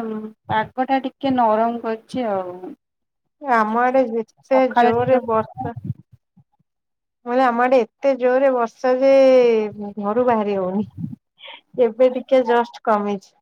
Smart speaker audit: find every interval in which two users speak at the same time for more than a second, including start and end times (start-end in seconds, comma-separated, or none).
3.6-5.7